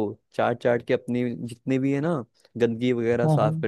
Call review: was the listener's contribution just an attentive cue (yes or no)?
yes